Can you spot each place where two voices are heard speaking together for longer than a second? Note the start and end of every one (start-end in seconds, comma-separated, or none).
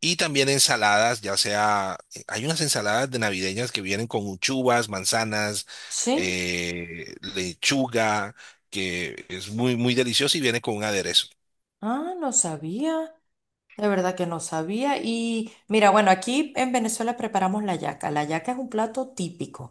none